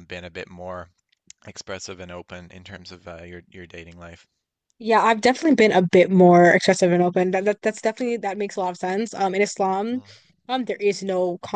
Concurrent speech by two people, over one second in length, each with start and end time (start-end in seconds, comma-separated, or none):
none